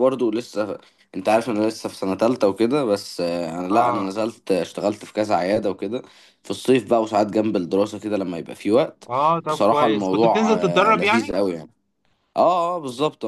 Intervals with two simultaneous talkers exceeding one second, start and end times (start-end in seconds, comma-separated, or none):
9.5-11.4